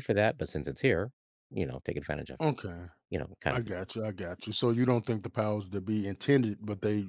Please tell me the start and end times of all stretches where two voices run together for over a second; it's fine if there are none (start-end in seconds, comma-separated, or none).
none